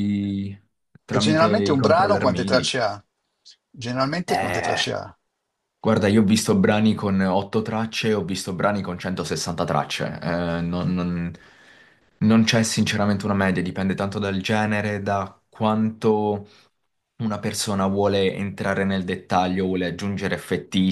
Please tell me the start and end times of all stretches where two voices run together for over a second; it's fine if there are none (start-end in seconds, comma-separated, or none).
1.1-2.6